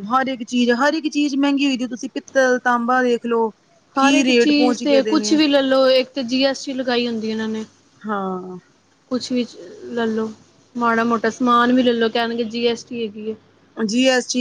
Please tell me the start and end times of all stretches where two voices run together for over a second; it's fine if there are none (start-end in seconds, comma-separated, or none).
none